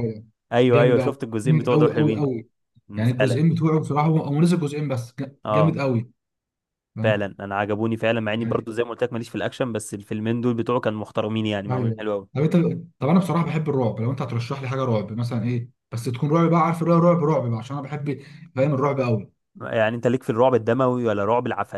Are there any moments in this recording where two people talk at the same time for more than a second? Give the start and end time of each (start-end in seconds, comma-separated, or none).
0.7-2.3